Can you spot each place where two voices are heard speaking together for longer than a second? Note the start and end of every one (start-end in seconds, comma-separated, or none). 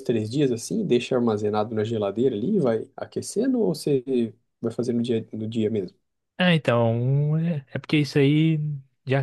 none